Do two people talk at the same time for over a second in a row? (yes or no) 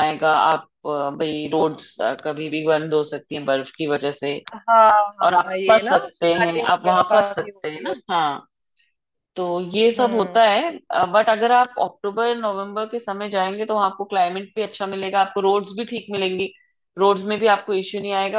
yes